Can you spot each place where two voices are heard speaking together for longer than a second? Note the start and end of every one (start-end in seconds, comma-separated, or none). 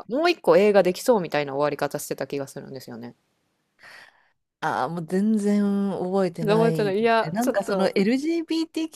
6.4-8.0